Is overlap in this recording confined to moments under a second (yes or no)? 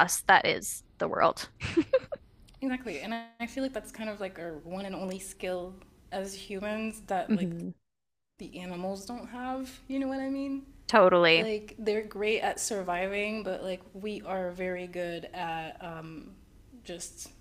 yes